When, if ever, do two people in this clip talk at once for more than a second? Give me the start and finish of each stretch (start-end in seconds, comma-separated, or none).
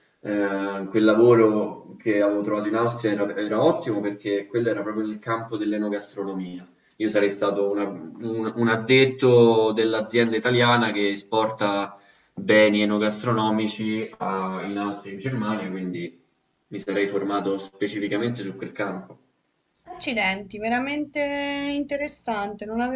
none